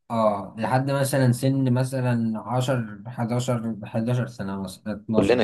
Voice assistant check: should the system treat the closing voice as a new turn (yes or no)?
yes